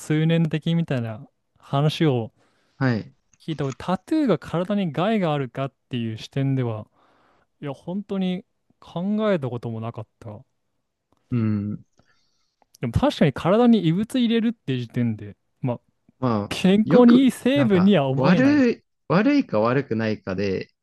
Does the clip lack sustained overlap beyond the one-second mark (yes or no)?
no